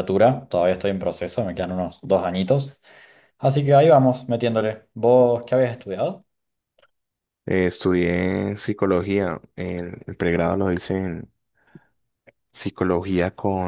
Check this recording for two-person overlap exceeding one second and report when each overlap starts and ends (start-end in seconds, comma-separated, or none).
none